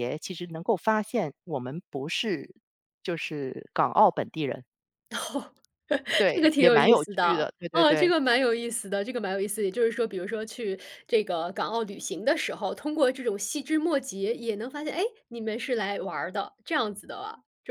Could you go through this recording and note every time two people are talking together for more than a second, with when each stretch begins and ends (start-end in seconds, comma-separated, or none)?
6.3-8.1